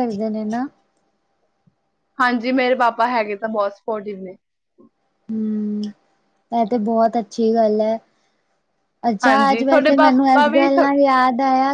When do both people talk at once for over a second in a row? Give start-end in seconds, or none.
9.2-10.9